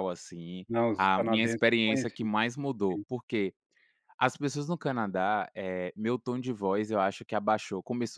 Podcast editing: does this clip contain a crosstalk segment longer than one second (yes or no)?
yes